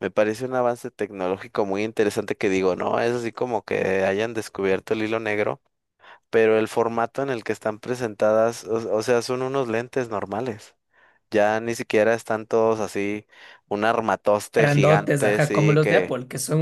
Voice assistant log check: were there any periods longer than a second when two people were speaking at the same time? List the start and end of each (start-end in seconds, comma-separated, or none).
14.6-16.1